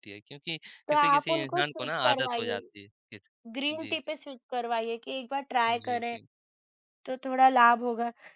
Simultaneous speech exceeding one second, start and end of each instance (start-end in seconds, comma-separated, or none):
0.9-2.5